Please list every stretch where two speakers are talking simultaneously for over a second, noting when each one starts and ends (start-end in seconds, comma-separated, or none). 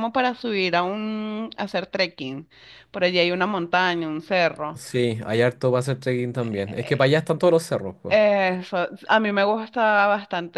none